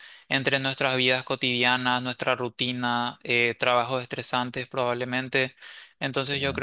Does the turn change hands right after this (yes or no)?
no